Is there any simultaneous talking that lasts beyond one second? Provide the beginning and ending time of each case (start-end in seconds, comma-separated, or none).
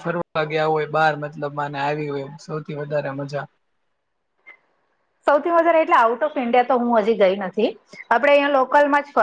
none